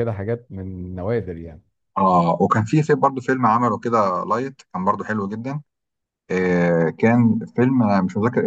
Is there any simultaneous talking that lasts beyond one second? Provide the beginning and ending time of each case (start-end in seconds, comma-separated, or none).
none